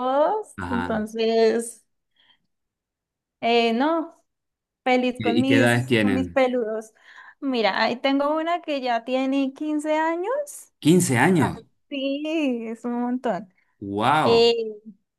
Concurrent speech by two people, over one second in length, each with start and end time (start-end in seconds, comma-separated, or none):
5.2-6.4